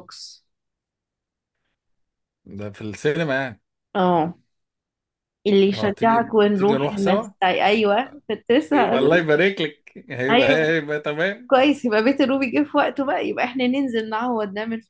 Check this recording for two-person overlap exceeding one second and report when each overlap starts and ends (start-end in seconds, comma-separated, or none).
5.7-7.3